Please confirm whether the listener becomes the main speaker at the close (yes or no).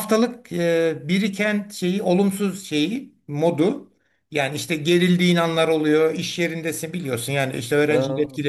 no